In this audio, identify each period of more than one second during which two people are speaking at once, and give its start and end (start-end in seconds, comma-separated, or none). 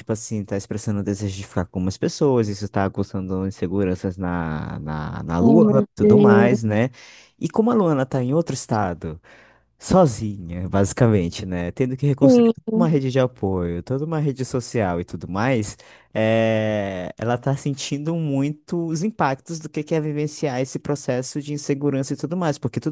5.4-6.6